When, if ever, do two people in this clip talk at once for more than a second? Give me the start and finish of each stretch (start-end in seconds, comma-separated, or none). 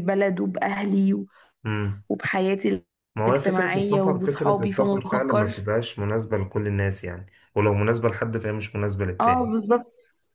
3.3-5.5